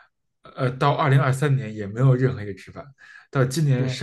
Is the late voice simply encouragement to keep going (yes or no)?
yes